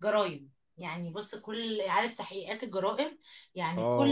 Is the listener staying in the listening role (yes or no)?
yes